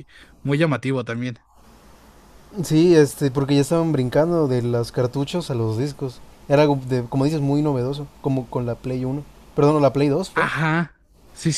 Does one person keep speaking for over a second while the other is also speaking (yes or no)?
no